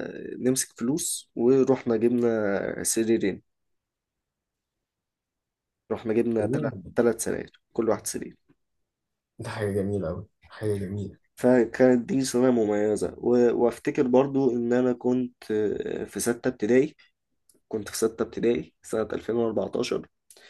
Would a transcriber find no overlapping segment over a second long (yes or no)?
yes